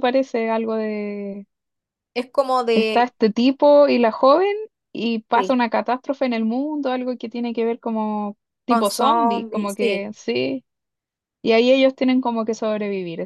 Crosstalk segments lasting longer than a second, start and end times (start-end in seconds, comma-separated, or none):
8.7-10.1